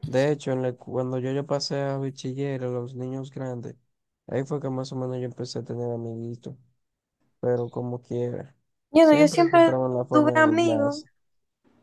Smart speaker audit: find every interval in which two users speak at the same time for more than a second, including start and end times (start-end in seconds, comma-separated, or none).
9.0-11.0